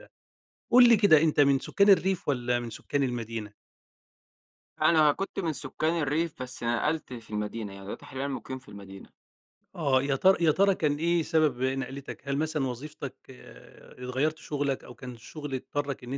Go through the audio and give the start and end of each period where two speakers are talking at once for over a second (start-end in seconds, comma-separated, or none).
none